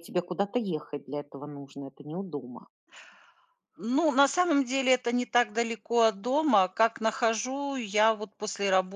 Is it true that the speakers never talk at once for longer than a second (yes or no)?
yes